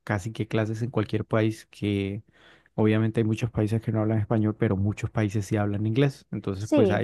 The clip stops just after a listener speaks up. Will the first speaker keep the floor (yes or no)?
yes